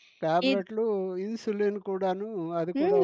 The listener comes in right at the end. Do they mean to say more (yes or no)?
yes